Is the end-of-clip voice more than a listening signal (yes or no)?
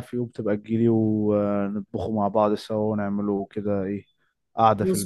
yes